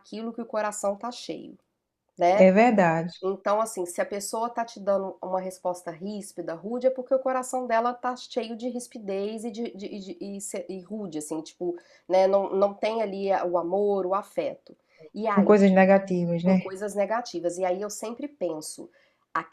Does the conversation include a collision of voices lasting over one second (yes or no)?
no